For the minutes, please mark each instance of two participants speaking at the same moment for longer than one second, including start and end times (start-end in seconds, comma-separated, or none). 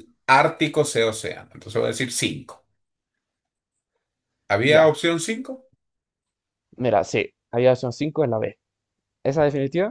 none